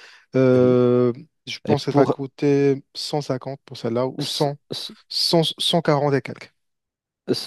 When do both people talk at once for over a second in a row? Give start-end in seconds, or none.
none